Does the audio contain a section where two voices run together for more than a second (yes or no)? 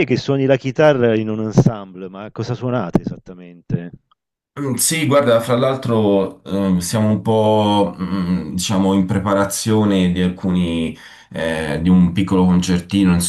no